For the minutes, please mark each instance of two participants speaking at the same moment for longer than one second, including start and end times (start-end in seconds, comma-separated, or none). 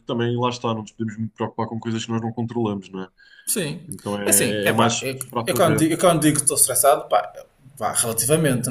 4.2-5.9